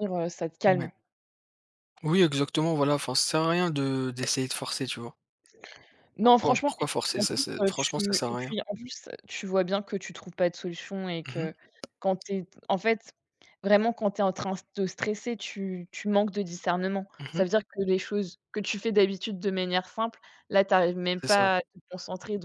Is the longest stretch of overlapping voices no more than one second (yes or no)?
no